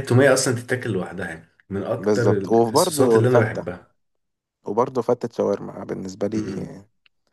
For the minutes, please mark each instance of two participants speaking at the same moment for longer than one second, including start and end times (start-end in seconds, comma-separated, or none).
2.0-3.7